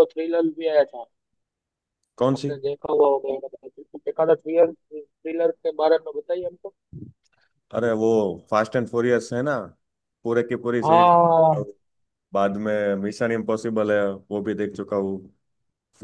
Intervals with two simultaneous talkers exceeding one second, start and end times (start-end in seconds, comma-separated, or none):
none